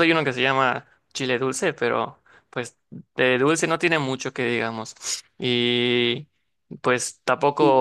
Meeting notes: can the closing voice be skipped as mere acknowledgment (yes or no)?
yes